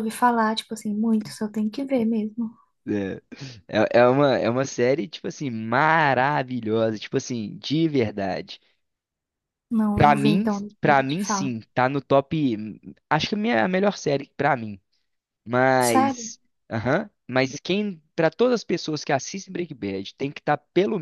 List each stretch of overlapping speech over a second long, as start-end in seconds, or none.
9.9-11.5